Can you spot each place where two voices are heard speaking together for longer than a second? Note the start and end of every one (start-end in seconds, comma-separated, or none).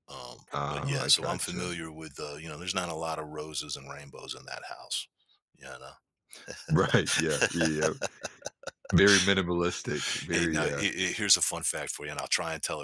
0.5-1.8